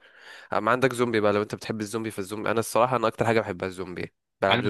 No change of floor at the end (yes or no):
no